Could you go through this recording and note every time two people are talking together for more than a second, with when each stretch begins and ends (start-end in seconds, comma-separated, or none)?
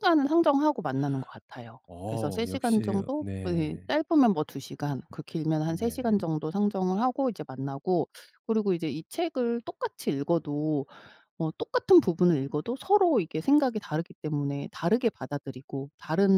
1.9-3.9